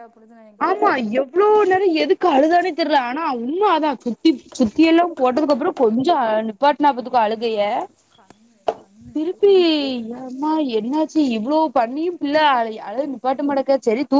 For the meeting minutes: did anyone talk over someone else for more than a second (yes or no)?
no